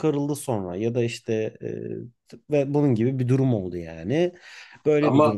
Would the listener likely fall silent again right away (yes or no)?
yes